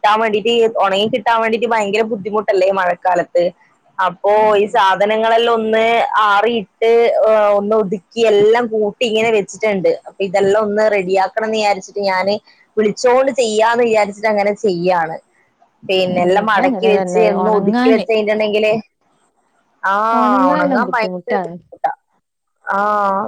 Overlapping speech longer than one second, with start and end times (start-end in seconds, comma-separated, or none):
16.1-18.1, 20.2-21.5